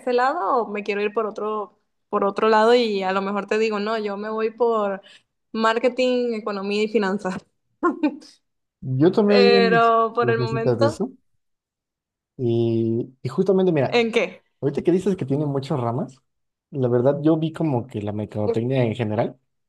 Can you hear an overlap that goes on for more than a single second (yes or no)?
yes